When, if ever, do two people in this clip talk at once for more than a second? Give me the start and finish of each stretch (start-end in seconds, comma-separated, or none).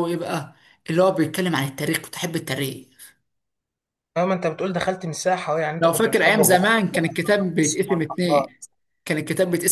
5.8-8.5